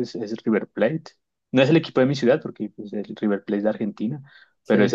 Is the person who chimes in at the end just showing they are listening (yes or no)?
yes